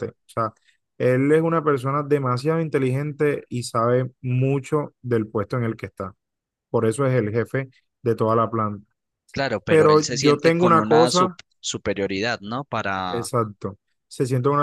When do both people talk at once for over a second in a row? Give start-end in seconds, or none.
9.7-11.4